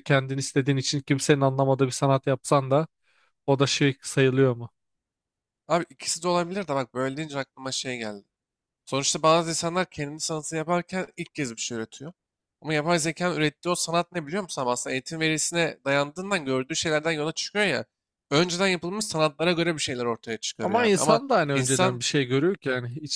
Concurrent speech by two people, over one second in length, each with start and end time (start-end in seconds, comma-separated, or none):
20.6-22.0